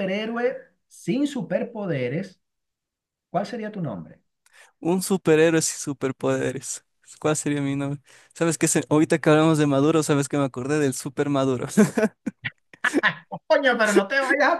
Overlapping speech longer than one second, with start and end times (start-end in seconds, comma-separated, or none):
none